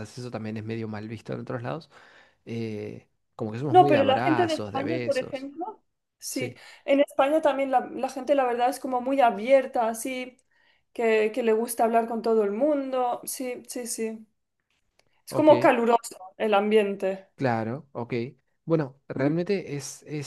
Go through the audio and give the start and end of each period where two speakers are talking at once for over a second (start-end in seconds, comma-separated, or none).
3.7-5.5